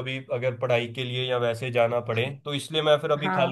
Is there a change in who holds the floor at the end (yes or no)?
no